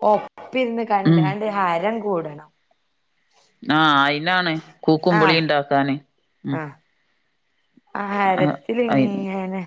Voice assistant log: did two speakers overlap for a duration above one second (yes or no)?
no